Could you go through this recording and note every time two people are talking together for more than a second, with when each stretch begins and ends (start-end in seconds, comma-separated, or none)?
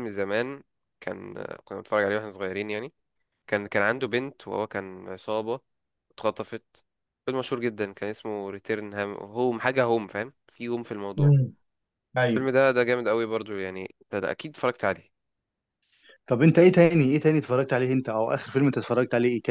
none